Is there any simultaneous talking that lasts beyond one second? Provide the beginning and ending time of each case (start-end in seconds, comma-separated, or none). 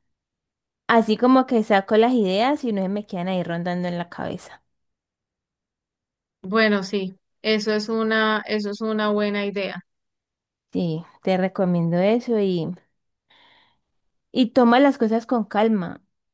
none